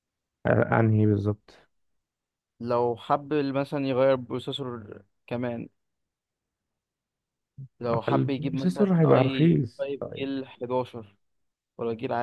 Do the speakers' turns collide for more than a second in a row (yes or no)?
yes